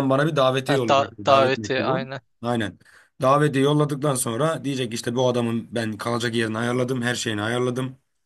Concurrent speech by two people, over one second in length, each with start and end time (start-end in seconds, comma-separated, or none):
0.7-2.2